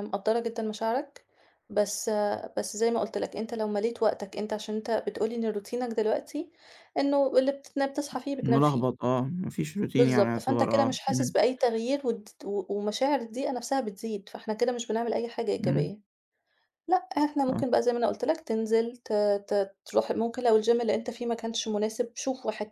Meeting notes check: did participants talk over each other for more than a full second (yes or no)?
yes